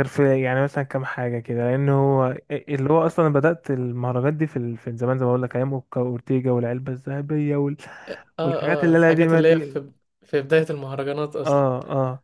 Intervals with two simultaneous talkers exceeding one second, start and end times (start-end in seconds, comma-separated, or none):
8.4-9.8